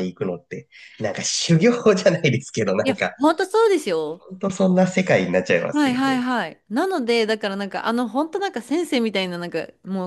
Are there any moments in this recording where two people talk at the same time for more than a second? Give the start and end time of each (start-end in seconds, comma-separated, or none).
none